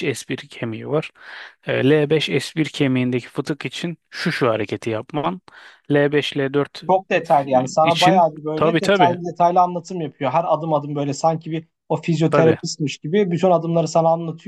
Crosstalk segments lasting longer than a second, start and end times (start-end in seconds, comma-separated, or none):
7.8-9.2